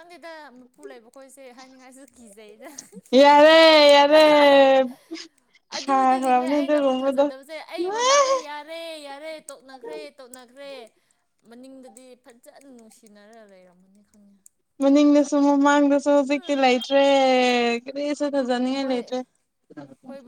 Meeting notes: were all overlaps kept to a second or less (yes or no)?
no